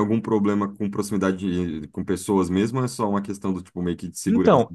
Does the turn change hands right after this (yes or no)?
yes